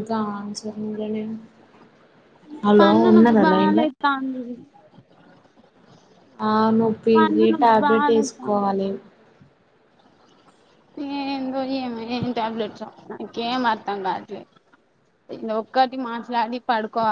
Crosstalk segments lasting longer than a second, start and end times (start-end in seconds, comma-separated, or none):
7.2-8.7